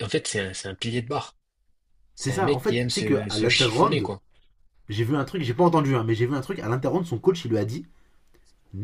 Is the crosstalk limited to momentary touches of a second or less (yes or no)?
no